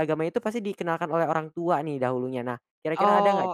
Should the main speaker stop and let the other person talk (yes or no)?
yes